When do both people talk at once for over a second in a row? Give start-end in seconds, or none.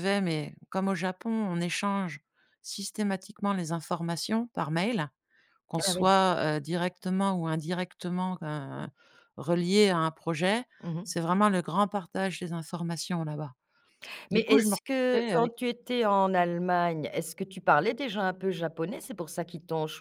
14.3-15.5